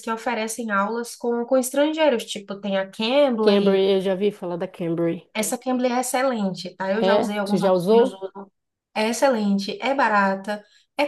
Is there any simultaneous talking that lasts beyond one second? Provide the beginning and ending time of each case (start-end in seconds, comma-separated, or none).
7.0-8.2